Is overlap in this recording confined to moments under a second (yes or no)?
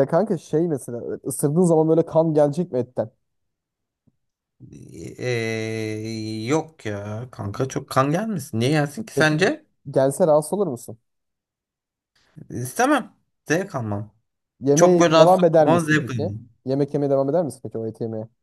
no